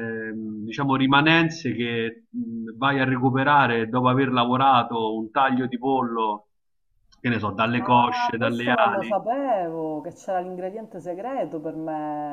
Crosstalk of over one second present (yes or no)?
yes